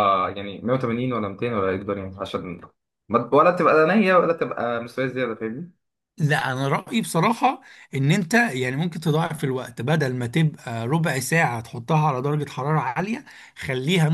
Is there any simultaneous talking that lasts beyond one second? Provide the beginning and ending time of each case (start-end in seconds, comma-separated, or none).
none